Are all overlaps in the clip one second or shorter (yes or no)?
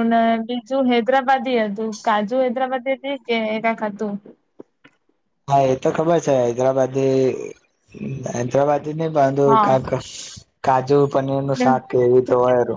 yes